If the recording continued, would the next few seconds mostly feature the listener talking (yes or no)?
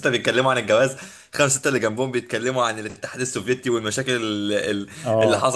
no